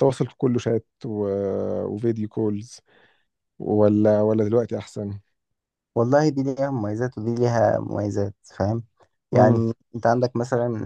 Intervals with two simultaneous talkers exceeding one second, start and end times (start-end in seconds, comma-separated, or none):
none